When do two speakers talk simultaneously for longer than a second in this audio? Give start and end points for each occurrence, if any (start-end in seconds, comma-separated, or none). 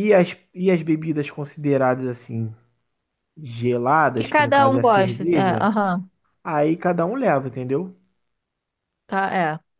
4.1-5.7